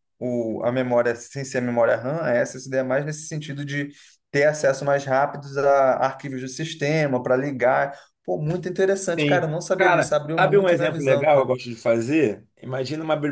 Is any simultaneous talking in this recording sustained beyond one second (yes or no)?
yes